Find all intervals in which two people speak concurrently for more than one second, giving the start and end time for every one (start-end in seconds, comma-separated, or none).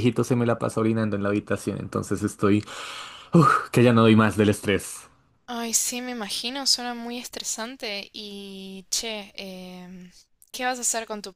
none